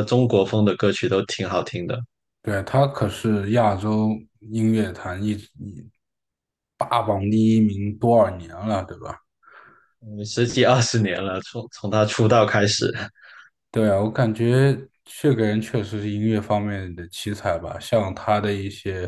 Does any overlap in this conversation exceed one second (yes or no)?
no